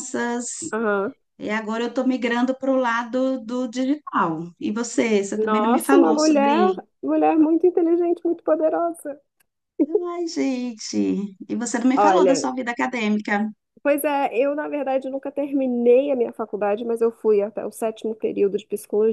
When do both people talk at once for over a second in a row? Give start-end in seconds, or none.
5.4-6.7